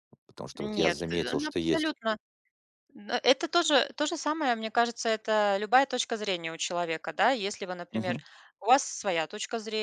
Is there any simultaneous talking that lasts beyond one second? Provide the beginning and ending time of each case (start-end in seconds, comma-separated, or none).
0.5-1.9